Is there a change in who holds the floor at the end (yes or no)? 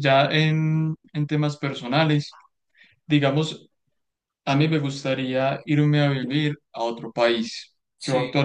no